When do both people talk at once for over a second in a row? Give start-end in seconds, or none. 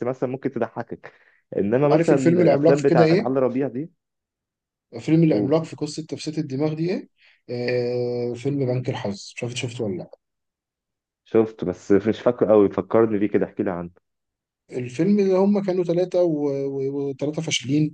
1.9-3.3